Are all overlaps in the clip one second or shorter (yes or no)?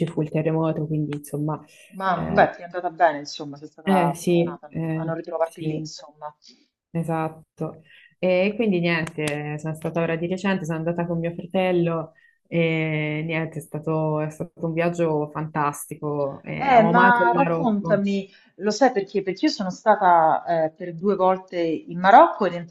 no